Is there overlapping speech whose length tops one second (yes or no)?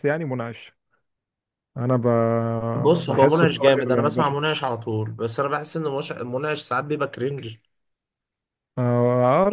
yes